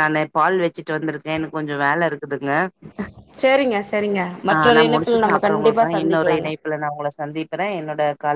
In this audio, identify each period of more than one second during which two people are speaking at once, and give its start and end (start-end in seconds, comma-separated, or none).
4.5-6.5